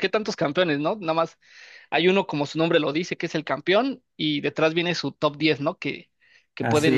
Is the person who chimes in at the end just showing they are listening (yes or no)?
yes